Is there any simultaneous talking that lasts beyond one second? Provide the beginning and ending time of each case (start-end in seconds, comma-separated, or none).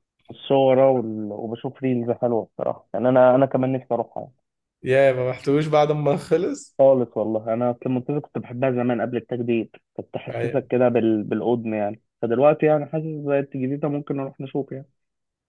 none